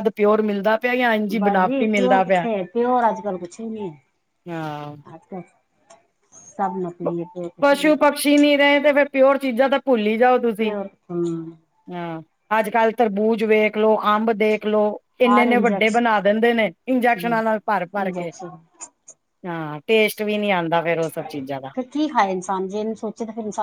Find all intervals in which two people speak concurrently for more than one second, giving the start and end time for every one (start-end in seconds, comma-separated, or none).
none